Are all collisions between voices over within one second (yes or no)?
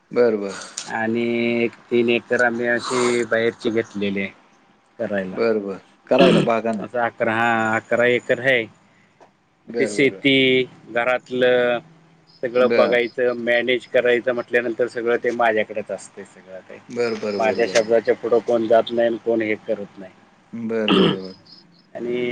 no